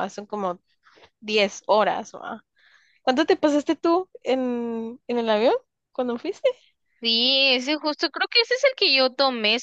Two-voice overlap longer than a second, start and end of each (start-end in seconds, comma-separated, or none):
none